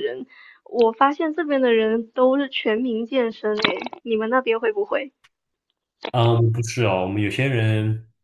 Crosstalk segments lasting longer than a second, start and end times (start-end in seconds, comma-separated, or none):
none